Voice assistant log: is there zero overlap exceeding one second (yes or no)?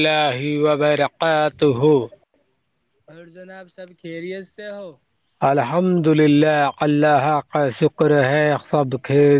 yes